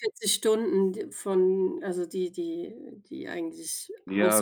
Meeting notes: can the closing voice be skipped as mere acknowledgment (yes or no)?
no